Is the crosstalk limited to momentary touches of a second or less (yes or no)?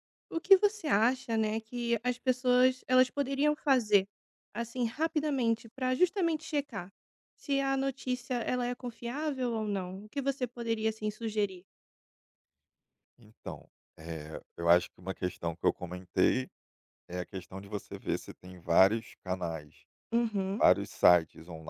yes